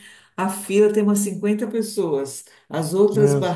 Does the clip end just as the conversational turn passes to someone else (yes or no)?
no